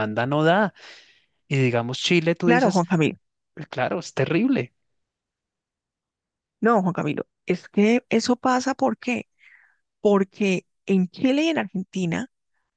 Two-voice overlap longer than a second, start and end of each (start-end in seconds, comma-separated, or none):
none